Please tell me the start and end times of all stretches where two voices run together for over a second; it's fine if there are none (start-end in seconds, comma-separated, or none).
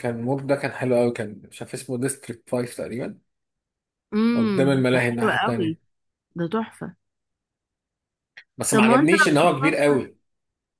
4.3-5.8, 8.7-9.9